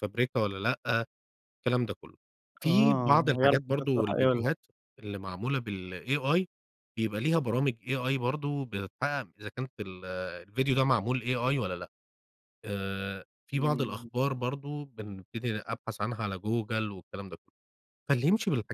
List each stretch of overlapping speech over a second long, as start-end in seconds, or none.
2.6-4.5